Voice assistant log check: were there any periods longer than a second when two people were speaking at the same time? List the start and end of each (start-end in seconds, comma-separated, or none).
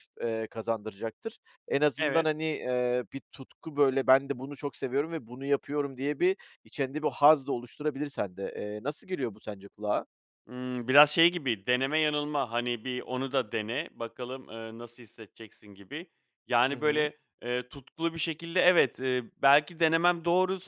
none